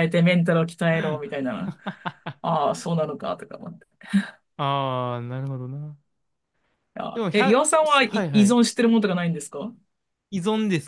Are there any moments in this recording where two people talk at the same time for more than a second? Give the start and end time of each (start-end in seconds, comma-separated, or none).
7.1-8.6